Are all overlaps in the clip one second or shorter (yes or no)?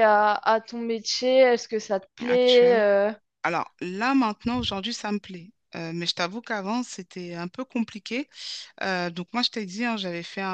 yes